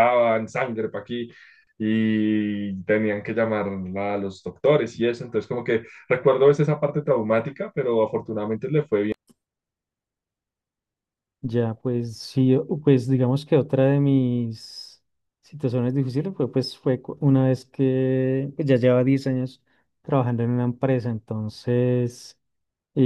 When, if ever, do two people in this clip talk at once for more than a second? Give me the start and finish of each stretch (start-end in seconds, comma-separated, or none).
none